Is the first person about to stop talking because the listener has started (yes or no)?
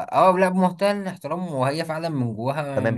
yes